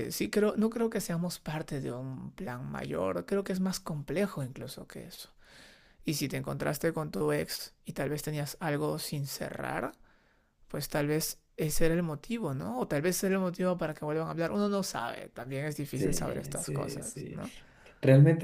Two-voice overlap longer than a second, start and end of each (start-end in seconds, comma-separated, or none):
15.9-17.4